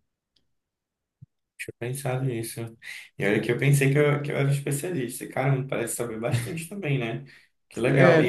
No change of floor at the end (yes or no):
no